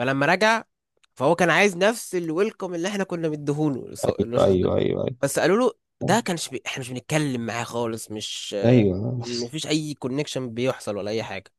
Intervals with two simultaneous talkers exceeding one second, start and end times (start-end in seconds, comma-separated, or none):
none